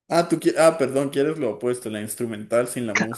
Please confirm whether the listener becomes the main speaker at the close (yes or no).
yes